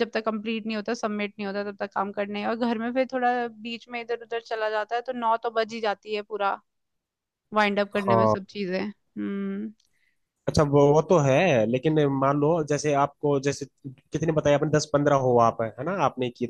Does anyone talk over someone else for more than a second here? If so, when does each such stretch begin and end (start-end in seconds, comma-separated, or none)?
none